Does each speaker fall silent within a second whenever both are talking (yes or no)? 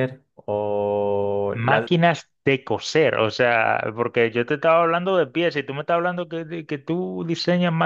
yes